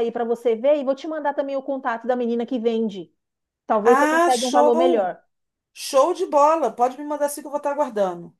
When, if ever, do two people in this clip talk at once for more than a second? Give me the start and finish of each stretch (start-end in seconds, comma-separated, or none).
3.8-5.1